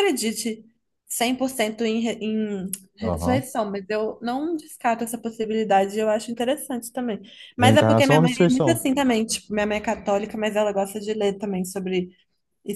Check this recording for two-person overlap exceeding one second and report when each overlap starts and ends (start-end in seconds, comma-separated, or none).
7.6-8.8